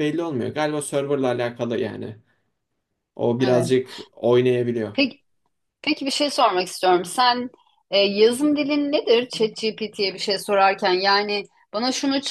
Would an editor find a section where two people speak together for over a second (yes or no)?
no